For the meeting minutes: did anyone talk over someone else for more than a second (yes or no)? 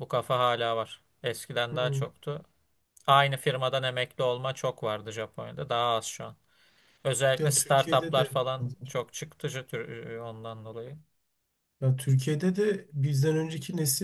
yes